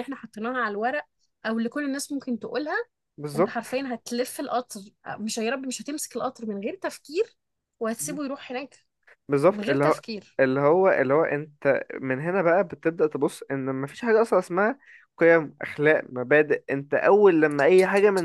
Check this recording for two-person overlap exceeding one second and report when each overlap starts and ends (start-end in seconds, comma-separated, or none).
none